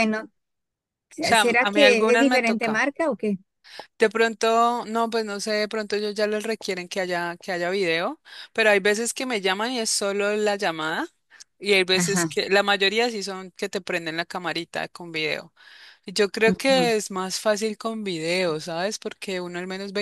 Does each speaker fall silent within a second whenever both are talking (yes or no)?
no